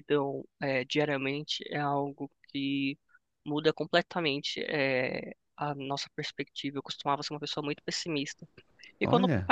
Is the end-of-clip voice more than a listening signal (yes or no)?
no